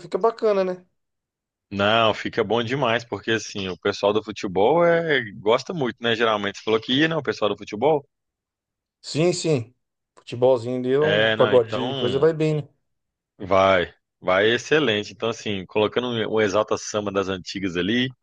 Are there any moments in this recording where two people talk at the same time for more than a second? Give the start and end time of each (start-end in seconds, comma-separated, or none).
11.0-12.3